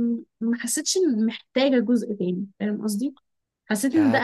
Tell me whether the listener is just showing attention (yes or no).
no